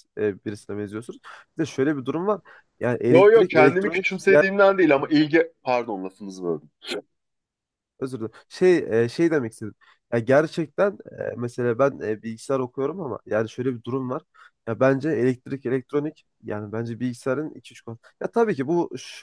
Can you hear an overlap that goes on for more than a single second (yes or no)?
yes